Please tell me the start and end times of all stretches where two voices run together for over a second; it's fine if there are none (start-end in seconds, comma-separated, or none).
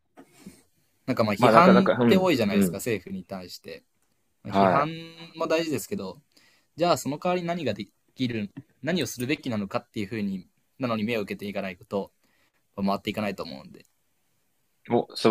1.4-2.8